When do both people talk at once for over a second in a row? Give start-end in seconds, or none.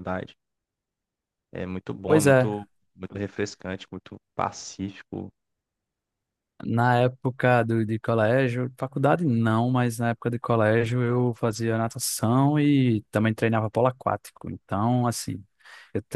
none